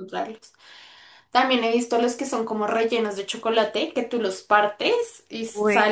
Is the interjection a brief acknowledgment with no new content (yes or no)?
yes